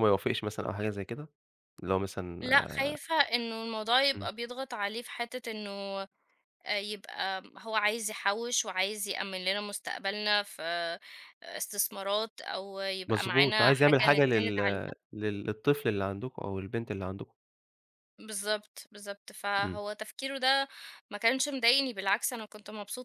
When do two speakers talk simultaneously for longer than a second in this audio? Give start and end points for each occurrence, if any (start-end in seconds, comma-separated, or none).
13.1-14.6